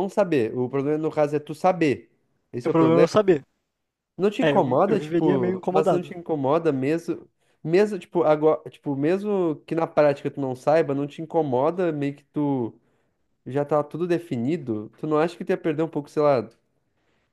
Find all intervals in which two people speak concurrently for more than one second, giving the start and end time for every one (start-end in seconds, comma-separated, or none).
4.4-6.1